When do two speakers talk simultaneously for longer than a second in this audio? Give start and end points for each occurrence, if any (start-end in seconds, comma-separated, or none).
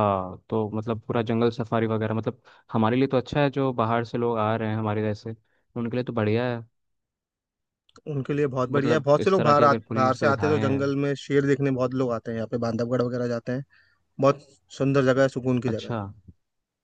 8.7-10.8